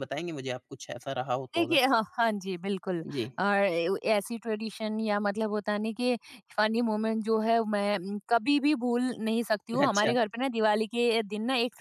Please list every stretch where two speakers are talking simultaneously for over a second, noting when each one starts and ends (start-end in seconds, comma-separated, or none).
none